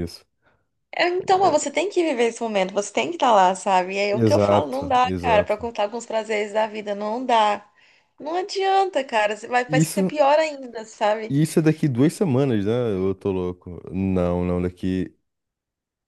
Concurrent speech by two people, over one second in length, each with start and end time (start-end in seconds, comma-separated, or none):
4.1-5.6